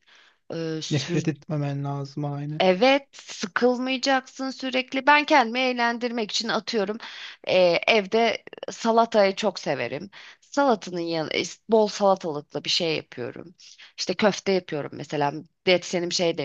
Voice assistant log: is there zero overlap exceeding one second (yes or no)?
yes